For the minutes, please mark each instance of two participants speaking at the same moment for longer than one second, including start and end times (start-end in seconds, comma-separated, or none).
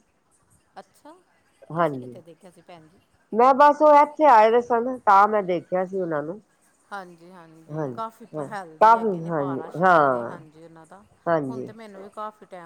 8.4-10.4